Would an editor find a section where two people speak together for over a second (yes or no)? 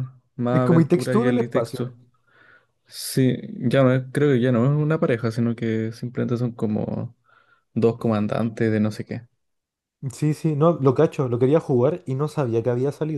yes